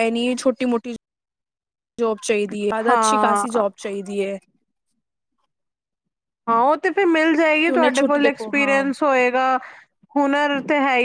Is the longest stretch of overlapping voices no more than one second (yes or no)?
no